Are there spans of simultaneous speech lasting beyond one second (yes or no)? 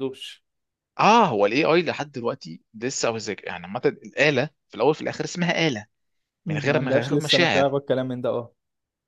yes